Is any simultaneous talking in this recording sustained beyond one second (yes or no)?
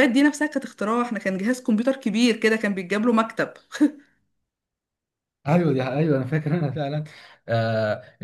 no